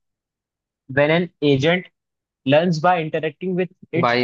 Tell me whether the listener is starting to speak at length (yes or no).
yes